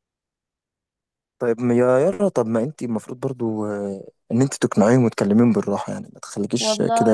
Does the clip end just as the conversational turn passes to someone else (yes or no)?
yes